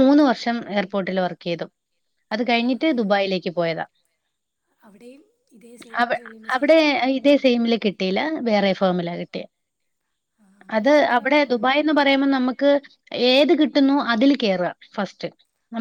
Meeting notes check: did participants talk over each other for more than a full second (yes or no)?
no